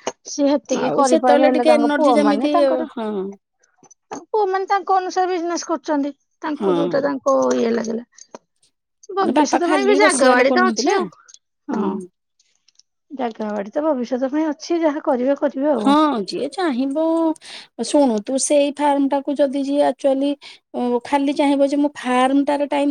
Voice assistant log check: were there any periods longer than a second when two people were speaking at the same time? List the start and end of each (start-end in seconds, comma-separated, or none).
0.8-2.5